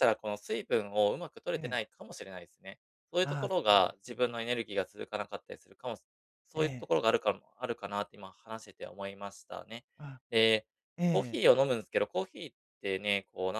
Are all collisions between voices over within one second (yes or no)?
no